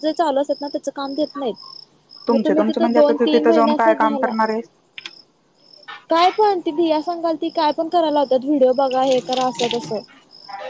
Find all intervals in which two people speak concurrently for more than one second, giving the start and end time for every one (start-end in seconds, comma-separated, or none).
2.3-4.3